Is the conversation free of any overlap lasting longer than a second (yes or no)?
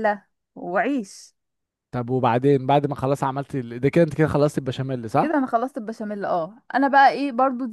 yes